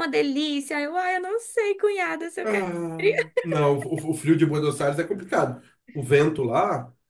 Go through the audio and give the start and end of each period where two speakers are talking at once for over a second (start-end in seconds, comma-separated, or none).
none